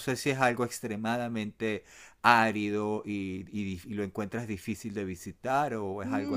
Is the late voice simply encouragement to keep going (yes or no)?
no